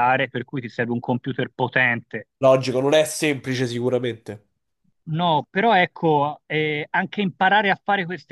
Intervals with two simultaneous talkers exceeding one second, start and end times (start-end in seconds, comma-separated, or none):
none